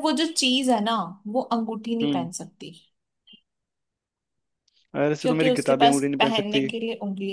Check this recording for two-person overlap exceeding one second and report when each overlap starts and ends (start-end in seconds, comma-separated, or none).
5.2-6.7